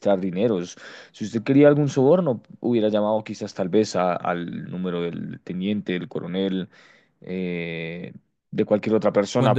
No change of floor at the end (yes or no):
no